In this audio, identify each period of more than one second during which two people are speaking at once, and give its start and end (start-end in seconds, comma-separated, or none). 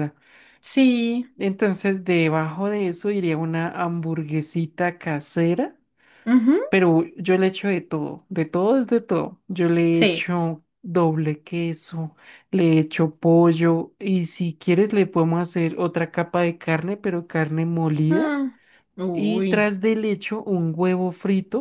none